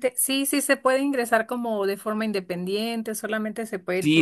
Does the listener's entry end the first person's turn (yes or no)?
yes